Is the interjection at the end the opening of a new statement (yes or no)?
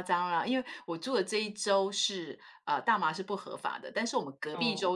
no